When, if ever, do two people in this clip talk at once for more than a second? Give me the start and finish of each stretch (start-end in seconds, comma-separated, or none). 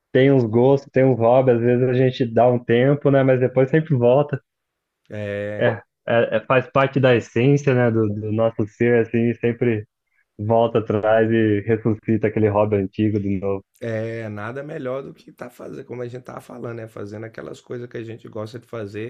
none